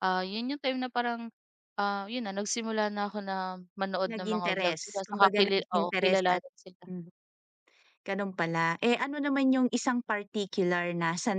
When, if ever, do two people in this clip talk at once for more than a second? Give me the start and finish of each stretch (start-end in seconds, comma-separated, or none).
4.0-6.4